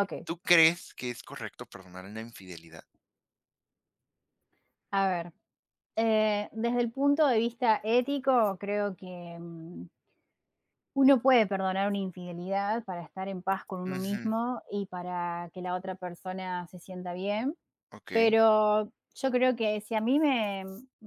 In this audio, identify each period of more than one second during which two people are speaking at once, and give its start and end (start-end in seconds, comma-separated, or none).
none